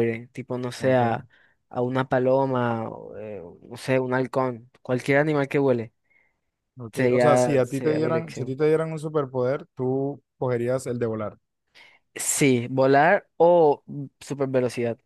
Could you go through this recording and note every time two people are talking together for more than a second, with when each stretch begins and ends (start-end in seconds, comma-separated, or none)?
6.9-8.6